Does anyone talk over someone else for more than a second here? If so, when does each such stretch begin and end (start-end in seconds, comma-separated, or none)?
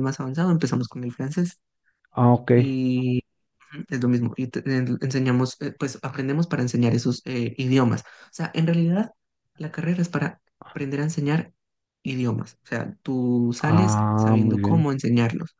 13.6-14.9